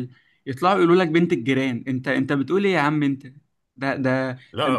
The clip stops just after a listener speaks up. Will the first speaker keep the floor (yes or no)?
yes